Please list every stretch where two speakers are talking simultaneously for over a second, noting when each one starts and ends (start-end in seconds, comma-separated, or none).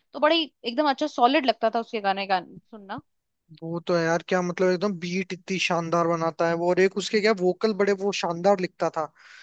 none